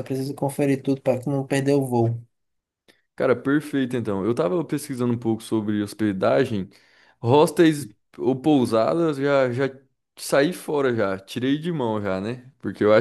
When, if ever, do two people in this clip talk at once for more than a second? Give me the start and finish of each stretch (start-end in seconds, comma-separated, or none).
none